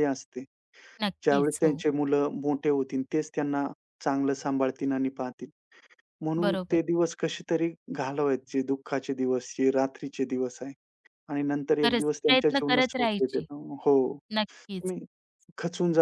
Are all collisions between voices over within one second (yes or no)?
no